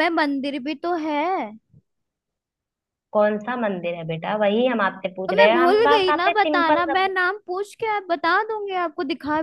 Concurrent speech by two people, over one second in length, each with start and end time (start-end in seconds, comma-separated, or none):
5.3-7.1